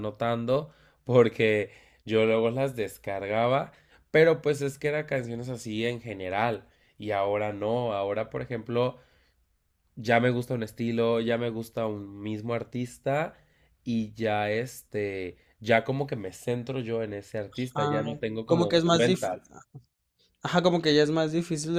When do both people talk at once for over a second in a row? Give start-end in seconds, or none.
17.7-19.4